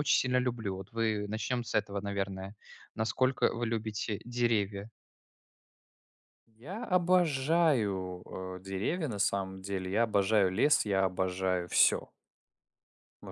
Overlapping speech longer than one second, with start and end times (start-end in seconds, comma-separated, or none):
none